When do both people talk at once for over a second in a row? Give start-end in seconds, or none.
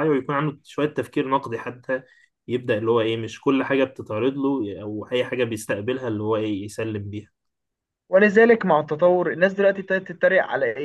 none